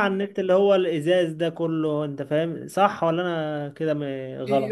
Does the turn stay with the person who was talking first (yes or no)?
no